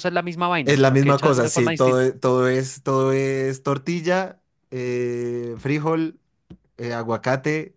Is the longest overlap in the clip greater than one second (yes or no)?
yes